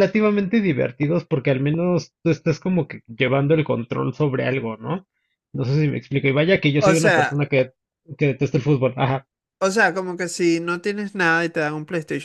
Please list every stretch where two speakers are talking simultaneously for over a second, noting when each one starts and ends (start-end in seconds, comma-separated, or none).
none